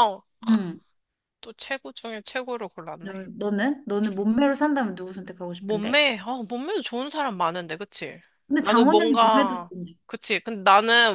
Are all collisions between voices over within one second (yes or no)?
no